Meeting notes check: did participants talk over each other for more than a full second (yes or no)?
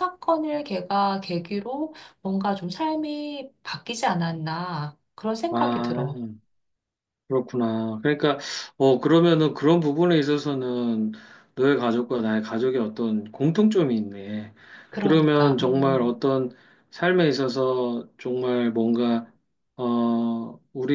yes